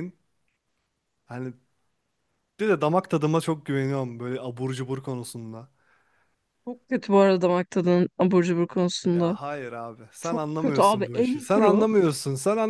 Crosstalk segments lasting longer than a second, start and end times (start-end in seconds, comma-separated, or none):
10.2-11.9